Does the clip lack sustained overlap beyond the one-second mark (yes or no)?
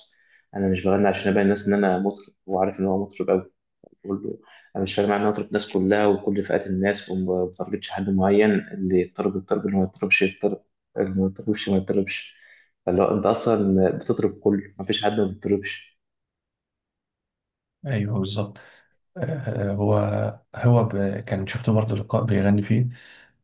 yes